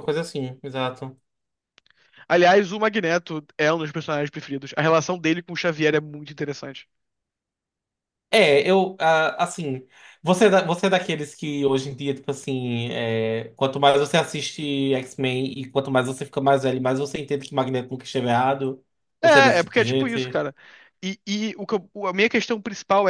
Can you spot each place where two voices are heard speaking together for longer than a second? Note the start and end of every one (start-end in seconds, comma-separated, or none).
19.2-20.4